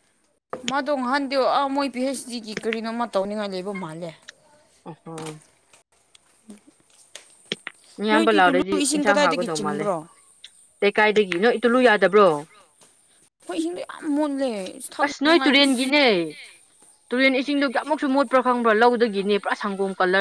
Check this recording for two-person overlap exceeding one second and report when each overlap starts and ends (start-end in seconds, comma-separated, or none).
8.1-9.9